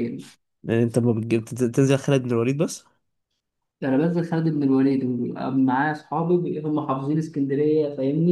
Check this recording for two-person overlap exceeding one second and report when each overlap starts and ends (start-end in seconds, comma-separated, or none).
none